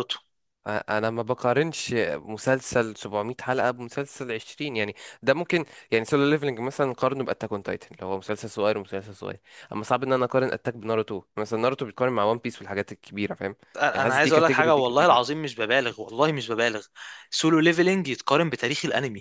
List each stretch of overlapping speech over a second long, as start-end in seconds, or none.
13.9-15.2